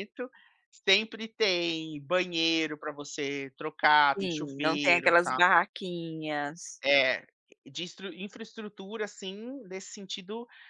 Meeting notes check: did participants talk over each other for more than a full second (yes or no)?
yes